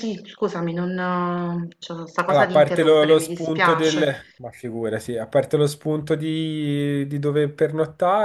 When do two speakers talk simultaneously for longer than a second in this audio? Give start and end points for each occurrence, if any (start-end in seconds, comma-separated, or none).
2.2-4.1